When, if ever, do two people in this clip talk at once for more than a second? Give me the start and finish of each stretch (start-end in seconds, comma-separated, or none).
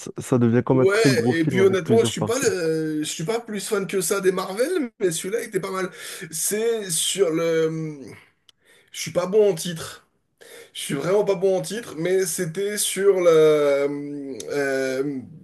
0.7-2.5